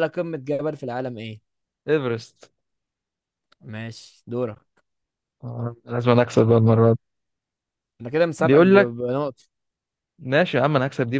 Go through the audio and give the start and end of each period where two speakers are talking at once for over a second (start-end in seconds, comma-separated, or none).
none